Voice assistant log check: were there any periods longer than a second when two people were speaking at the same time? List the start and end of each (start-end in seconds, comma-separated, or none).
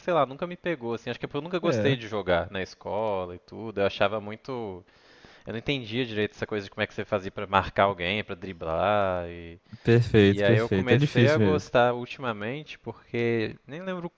10.2-11.7